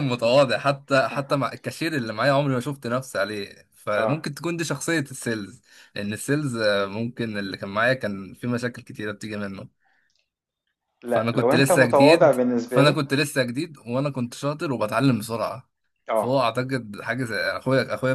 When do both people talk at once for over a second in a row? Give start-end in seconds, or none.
11.1-13.0